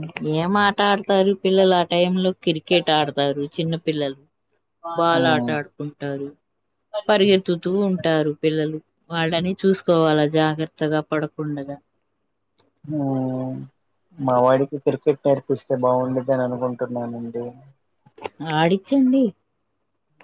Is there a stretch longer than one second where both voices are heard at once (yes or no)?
no